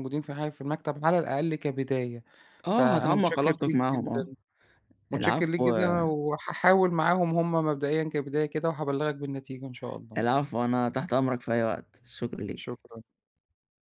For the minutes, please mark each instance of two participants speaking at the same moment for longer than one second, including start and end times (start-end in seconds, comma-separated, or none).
2.7-4.2